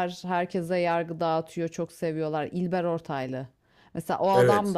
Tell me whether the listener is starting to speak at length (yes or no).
no